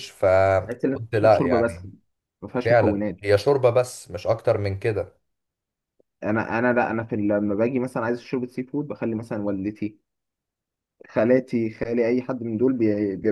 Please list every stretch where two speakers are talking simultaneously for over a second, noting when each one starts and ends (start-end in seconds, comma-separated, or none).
0.6-1.9